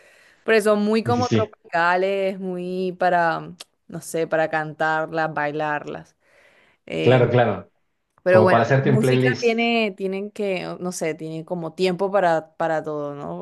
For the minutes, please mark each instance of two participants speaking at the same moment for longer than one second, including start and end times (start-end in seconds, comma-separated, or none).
8.3-9.6